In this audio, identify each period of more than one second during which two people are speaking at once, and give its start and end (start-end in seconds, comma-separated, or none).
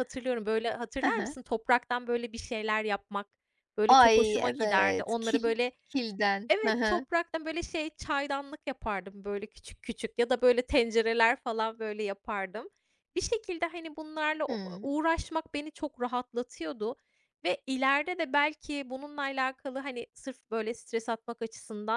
3.9-5.7